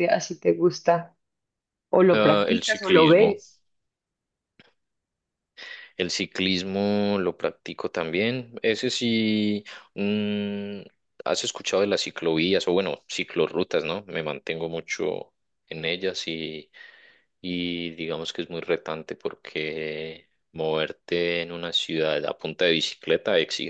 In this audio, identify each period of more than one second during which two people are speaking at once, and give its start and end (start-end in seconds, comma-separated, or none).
2.1-3.4